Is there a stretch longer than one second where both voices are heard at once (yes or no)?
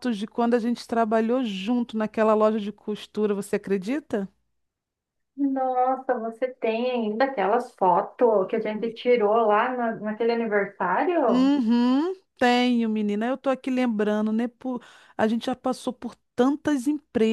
no